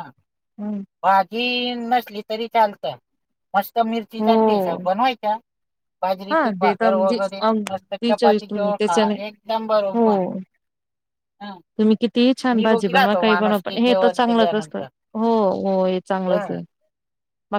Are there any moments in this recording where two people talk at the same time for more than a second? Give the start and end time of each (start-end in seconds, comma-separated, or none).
6.3-9.1, 12.6-14.8